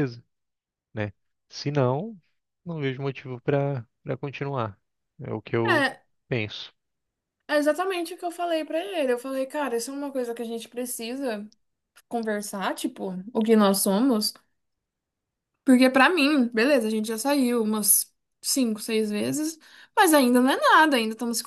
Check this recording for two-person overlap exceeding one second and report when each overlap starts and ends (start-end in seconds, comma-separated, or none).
none